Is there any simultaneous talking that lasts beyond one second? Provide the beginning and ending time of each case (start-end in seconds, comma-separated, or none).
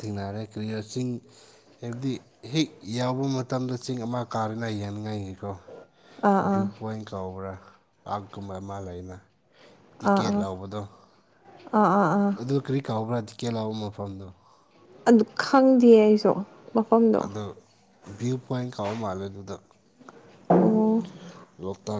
none